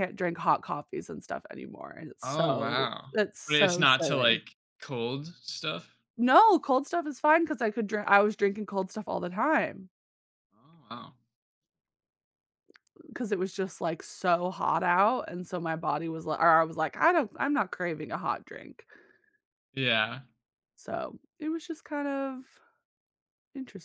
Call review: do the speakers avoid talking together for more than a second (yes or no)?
no